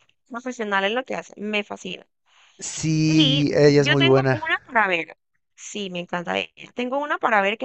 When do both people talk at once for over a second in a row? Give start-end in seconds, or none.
3.1-4.4